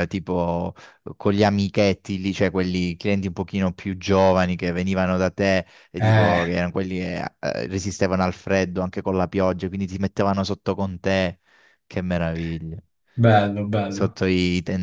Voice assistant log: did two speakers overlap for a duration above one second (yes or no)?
no